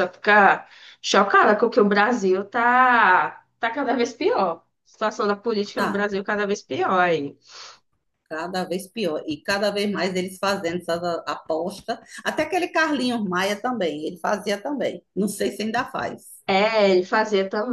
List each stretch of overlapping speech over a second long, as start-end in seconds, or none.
none